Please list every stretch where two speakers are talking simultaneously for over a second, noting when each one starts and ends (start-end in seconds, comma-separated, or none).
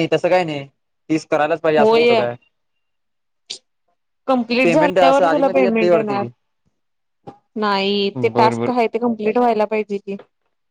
4.6-6.2